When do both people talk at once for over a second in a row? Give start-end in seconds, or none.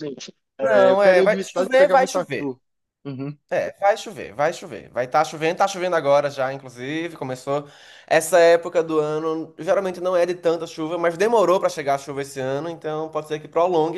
0.6-2.5